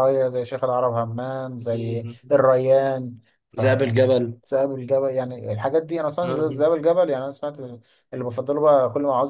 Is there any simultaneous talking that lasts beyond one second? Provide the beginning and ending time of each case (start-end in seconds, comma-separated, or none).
none